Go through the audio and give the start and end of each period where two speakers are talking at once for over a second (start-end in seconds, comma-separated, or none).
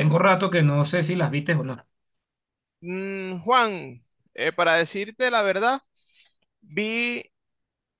none